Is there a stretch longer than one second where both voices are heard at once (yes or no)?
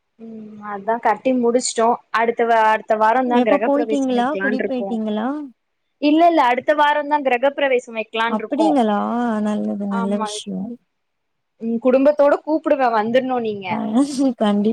yes